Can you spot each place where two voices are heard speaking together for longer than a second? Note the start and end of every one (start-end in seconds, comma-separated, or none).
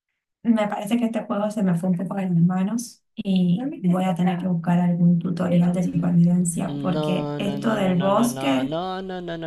6.6-8.8